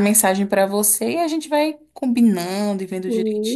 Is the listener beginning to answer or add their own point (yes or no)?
yes